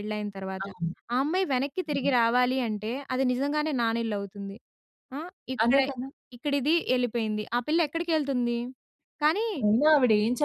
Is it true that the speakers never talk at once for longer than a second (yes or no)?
yes